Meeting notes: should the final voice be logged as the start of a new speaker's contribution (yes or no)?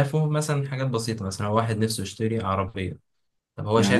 yes